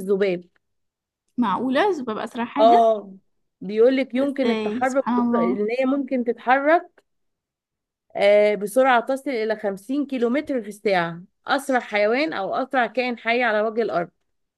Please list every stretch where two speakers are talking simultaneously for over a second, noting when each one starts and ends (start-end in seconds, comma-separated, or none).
4.1-5.6